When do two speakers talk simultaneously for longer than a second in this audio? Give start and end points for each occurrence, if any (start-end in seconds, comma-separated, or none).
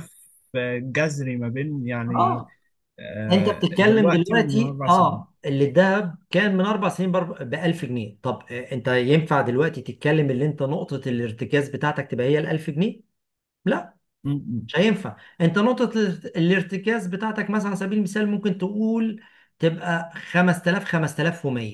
3.3-5.2